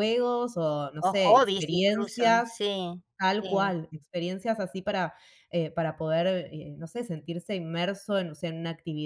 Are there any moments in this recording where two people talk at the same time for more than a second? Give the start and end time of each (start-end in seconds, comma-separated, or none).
1.0-2.5